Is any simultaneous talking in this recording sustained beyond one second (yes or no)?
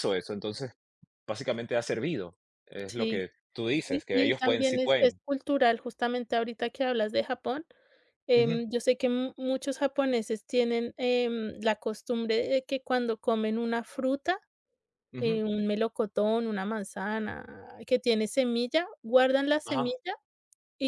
yes